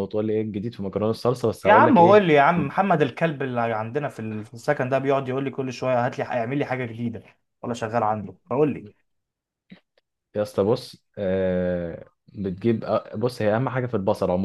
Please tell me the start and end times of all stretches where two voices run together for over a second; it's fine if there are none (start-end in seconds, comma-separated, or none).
none